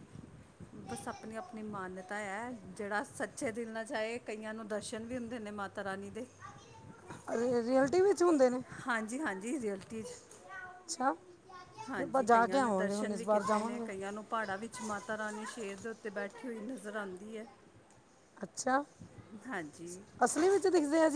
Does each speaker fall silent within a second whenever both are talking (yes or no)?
no